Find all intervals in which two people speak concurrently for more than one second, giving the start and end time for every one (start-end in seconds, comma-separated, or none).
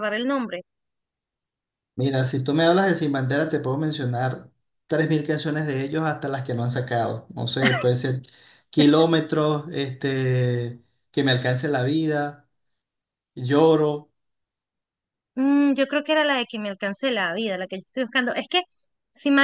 none